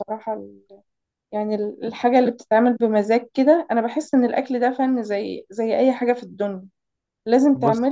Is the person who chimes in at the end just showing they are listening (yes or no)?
yes